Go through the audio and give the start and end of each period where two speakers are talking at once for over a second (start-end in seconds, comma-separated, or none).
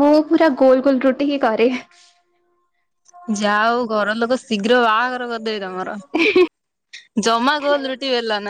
none